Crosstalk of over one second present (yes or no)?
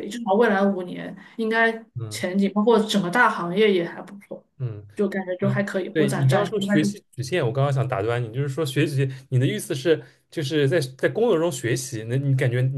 yes